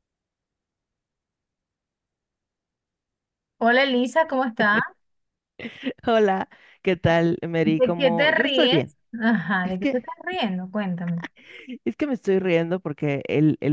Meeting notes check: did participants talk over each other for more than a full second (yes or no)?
yes